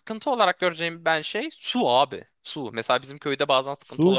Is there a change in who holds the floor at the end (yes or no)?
no